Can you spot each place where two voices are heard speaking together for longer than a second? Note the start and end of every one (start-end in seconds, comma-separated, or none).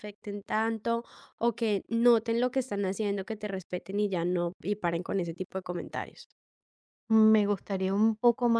none